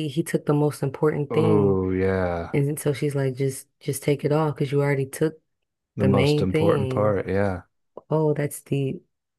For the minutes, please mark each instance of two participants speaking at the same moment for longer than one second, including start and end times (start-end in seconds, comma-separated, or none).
6.0-7.2